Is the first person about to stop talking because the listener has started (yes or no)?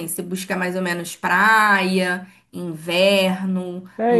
yes